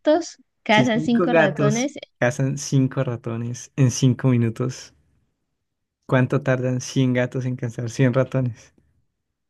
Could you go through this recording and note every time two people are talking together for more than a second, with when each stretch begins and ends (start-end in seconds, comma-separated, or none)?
0.7-1.9